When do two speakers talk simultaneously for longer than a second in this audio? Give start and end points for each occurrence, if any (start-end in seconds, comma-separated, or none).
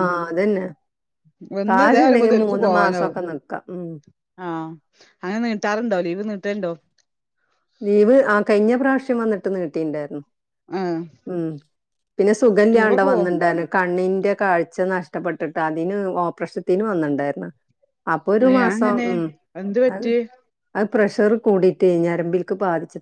1.7-3.2